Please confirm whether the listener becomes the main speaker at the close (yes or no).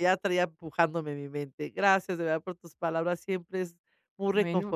no